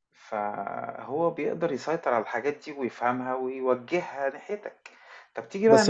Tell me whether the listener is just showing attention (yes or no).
no